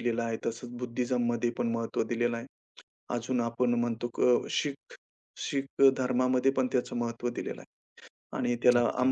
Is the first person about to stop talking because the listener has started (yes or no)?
no